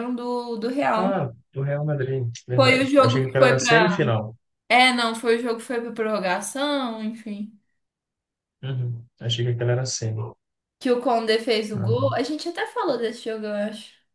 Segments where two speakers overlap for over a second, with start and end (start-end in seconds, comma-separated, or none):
2.5-4.0